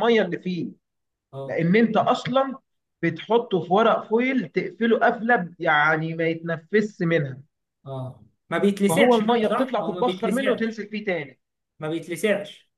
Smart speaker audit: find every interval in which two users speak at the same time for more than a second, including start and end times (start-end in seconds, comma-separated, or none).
8.9-10.8